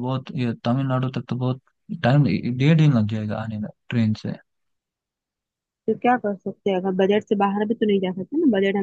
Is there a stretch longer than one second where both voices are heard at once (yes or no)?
no